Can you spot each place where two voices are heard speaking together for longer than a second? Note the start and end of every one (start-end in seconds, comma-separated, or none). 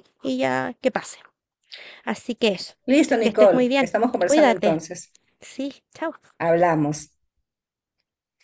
2.9-4.8